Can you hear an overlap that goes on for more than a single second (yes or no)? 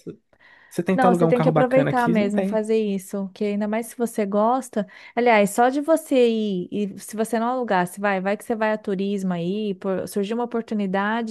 yes